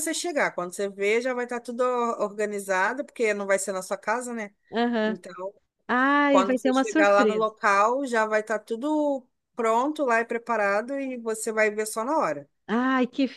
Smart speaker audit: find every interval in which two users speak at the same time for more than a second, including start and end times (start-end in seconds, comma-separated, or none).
6.3-7.5